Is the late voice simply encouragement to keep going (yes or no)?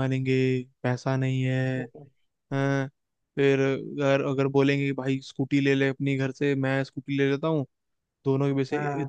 yes